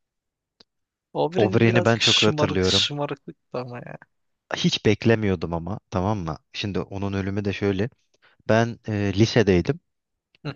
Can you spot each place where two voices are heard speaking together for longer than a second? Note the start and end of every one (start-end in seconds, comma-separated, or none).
1.4-2.9